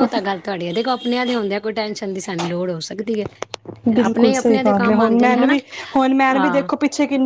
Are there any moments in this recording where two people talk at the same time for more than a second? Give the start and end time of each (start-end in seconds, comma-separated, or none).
none